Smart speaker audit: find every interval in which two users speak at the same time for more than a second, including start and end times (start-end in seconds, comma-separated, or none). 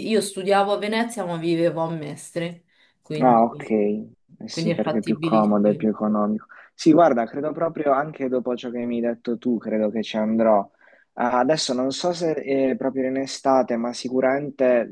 4.5-5.9